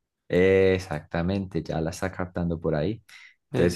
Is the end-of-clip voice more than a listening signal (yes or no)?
no